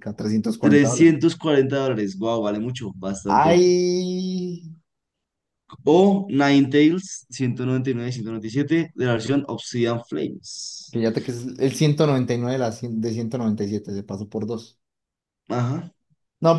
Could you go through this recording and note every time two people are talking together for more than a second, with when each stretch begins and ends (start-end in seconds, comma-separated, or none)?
none